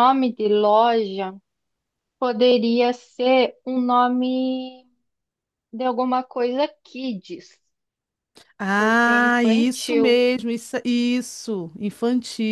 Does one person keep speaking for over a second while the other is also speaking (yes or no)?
yes